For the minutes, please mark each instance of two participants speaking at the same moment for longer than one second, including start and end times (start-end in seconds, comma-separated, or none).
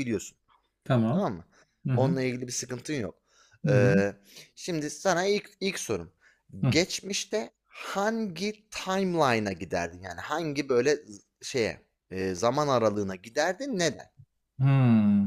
none